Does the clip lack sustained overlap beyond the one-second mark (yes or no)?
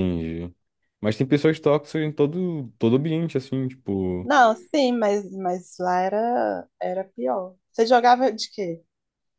yes